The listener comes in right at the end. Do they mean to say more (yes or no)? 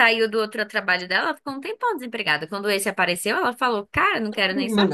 yes